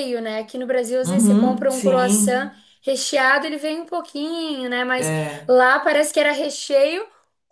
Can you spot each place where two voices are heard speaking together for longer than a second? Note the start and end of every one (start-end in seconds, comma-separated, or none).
1.0-2.5